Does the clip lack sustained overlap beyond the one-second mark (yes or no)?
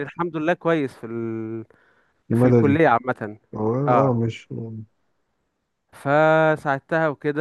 yes